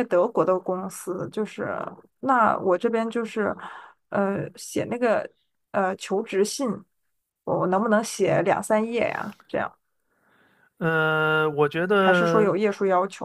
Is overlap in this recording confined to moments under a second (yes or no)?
yes